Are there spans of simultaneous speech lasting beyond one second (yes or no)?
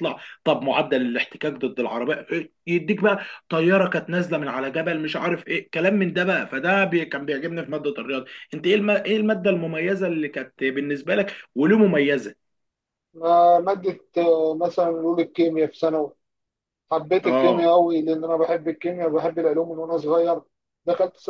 no